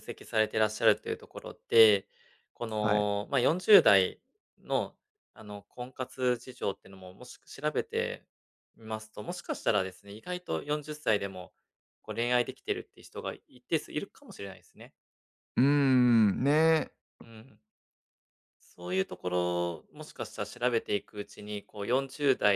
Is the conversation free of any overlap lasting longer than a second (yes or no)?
yes